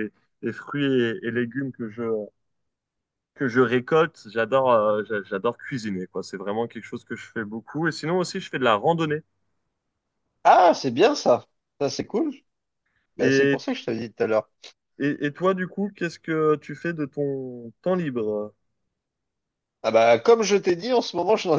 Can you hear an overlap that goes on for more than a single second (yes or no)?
no